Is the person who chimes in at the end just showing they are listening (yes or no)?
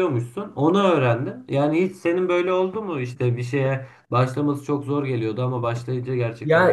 no